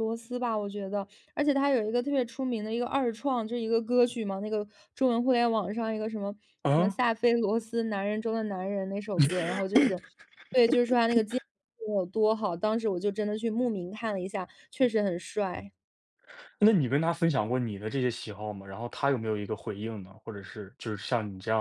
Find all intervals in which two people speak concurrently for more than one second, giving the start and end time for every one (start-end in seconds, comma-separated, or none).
none